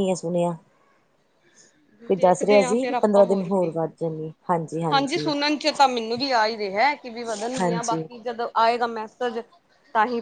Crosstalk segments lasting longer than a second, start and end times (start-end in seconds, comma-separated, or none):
2.1-3.7